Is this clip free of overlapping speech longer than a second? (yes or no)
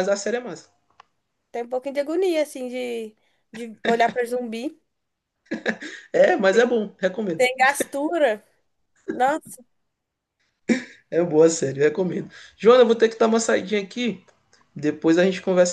yes